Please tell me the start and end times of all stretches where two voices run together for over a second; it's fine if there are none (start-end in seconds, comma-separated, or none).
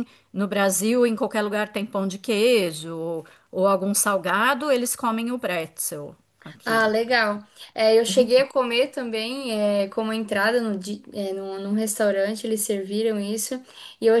none